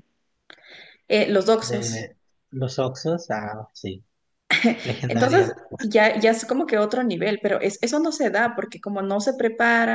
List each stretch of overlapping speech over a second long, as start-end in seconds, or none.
none